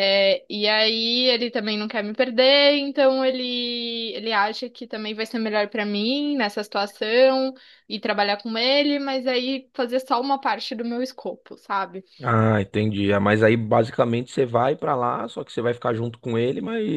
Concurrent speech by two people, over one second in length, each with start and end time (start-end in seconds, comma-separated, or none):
none